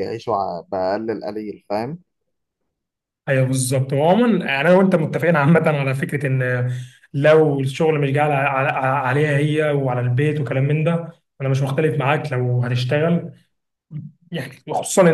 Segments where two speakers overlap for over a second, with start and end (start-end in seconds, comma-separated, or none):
none